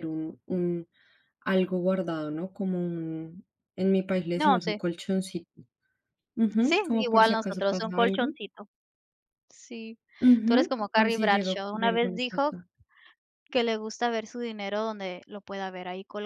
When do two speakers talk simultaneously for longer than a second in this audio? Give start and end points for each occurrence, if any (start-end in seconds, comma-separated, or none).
6.6-8.3, 10.4-12.6